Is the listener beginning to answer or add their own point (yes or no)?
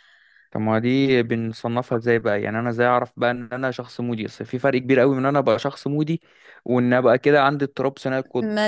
yes